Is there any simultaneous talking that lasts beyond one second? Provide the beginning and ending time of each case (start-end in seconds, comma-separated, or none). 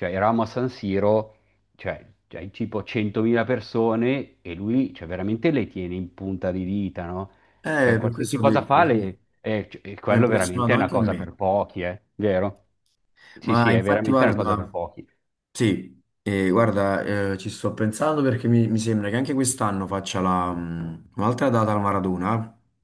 7.8-11.3, 13.4-14.7